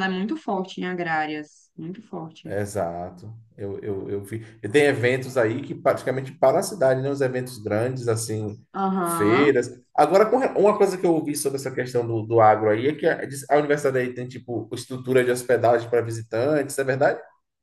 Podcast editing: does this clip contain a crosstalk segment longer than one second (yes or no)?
no